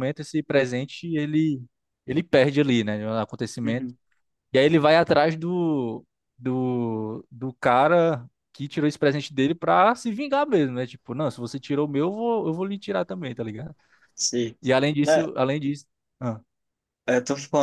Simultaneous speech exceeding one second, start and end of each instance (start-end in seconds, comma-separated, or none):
none